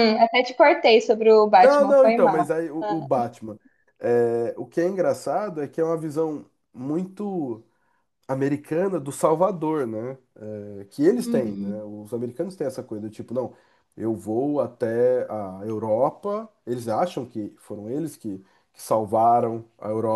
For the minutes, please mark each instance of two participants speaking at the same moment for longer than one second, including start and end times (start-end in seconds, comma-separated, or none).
1.5-3.0